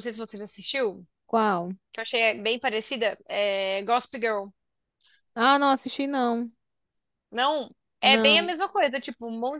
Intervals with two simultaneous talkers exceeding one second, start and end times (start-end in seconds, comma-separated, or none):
none